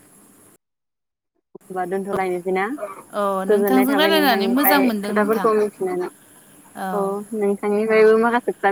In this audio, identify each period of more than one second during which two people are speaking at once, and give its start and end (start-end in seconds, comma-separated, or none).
3.5-5.5